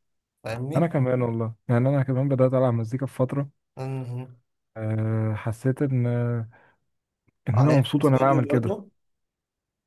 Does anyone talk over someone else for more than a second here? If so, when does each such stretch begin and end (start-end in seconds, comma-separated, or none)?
7.5-8.8